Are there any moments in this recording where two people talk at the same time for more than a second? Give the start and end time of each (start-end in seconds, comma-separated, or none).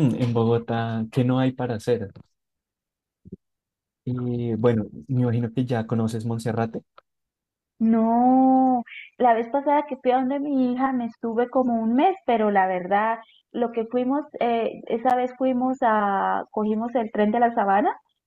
none